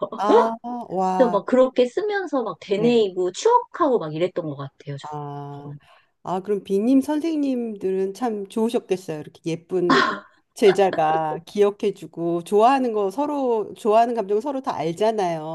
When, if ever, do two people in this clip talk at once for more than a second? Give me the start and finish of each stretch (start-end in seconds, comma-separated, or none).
none